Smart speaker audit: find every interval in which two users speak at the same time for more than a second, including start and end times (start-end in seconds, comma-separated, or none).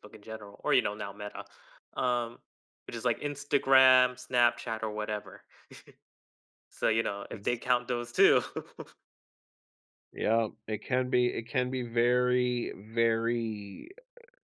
none